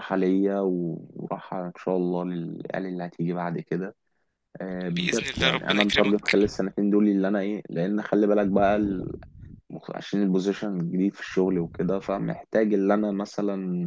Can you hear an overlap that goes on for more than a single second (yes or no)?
yes